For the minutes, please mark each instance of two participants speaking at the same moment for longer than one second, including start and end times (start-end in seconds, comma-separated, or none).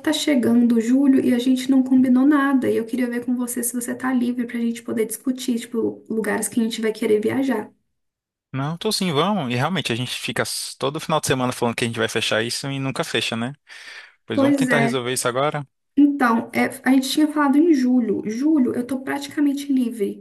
none